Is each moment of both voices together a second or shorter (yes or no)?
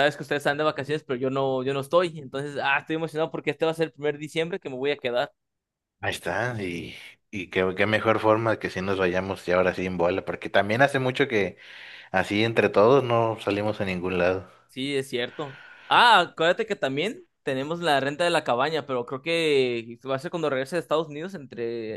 yes